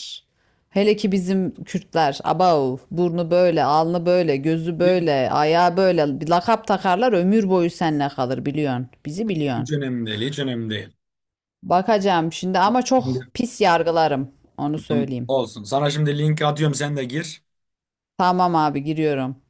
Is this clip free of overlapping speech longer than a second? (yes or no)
yes